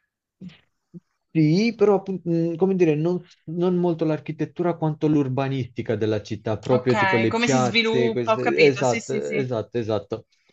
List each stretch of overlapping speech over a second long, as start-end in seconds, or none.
6.7-9.4